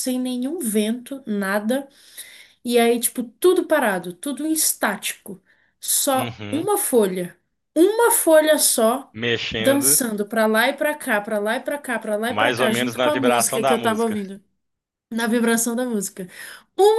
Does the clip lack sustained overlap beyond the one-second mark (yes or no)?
no